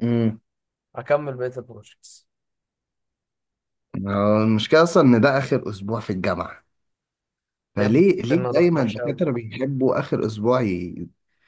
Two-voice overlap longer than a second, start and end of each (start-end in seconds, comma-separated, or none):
7.8-9.2